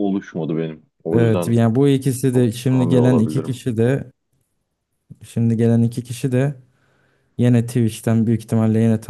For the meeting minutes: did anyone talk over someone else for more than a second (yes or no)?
yes